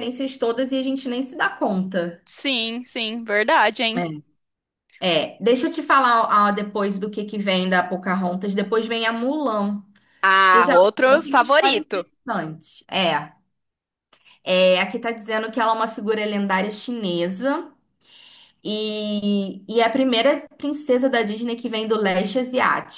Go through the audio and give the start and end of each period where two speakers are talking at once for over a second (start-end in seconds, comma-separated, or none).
10.4-12.0